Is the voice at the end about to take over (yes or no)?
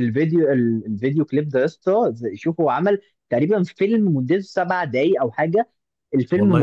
no